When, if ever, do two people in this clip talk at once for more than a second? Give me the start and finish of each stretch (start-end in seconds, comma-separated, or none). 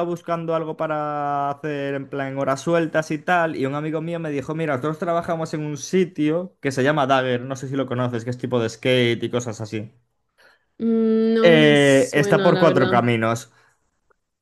11.4-13.1